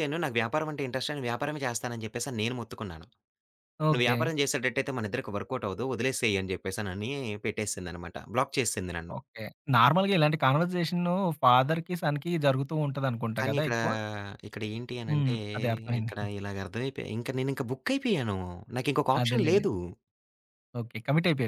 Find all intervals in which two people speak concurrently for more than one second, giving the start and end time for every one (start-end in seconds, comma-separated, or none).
none